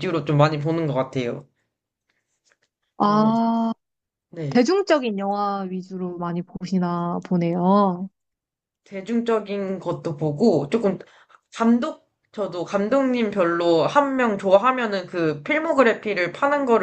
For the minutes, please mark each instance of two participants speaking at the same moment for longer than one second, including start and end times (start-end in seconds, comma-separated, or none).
none